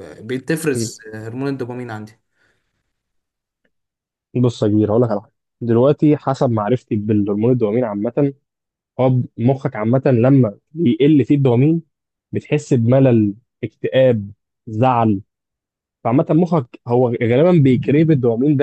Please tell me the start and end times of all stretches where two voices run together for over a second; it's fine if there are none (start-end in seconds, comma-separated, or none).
none